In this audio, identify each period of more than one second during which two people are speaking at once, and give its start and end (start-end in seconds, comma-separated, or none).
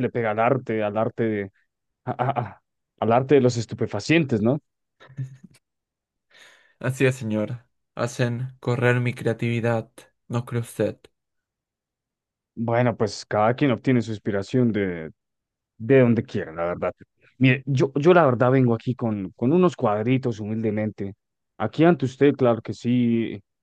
none